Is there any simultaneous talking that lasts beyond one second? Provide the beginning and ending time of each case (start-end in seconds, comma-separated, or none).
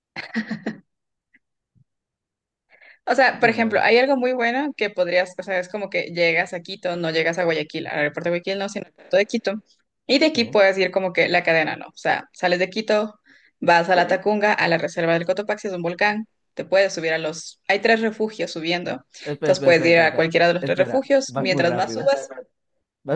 19.2-22.1